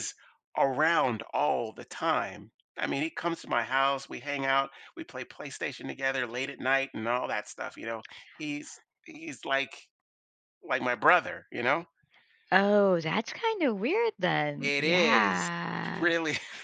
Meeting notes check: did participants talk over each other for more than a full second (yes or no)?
yes